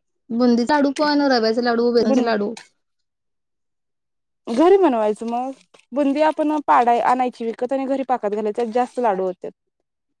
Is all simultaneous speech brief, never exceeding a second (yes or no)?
yes